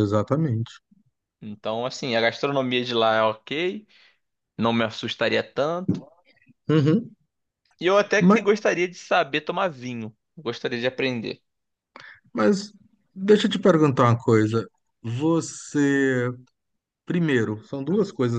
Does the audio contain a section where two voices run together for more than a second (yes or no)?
no